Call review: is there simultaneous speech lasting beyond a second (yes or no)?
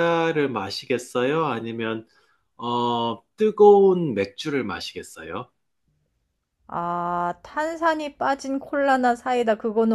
no